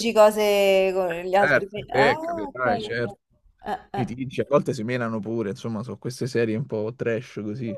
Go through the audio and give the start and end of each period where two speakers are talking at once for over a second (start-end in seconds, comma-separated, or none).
1.4-3.2